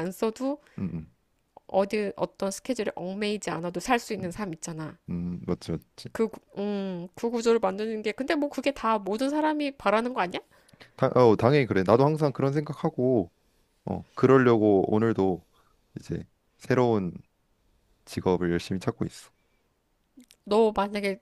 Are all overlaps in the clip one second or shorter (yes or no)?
yes